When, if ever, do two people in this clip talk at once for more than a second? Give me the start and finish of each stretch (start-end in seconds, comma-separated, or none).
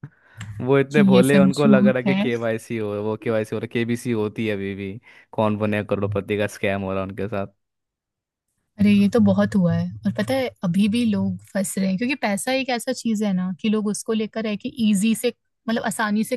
0.9-2.3